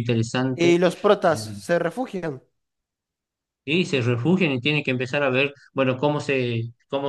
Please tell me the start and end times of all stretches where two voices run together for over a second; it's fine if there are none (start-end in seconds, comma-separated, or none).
none